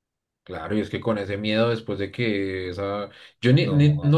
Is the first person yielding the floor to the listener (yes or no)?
no